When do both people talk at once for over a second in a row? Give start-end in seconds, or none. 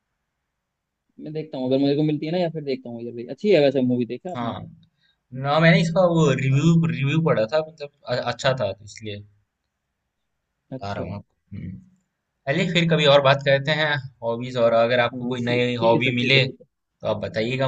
15.1-16.6